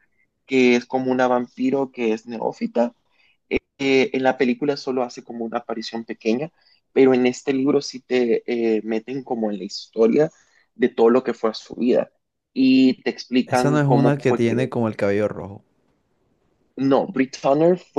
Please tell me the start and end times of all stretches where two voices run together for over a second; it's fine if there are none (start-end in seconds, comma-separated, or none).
13.5-14.7